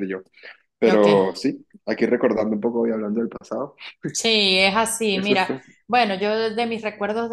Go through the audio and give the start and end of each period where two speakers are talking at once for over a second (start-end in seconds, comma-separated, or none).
none